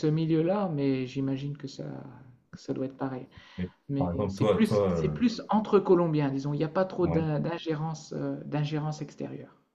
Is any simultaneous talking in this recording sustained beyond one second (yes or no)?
yes